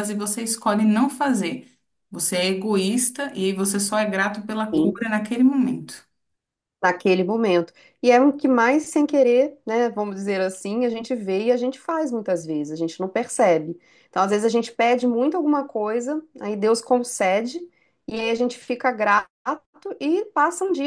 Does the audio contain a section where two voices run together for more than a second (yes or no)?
no